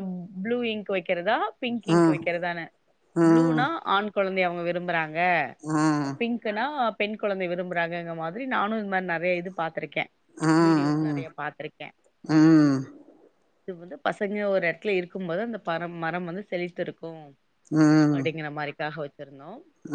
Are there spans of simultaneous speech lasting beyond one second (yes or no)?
no